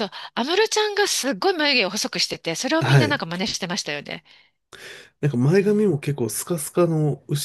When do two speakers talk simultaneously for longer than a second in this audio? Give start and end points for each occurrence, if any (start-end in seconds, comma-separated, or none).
none